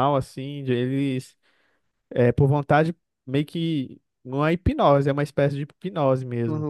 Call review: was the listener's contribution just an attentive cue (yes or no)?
no